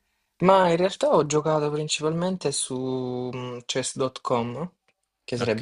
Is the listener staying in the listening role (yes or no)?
yes